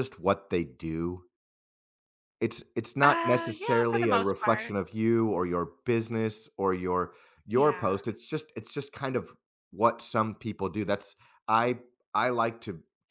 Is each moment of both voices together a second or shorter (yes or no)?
no